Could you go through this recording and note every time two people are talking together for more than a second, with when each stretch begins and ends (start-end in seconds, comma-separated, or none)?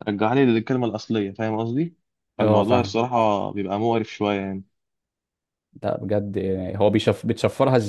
none